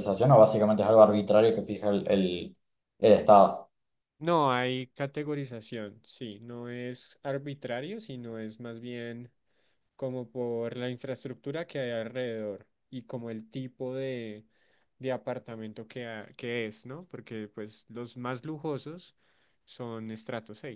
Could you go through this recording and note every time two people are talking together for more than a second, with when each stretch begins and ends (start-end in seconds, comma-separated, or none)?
none